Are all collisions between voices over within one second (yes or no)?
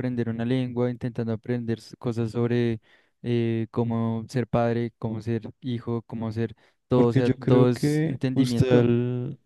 no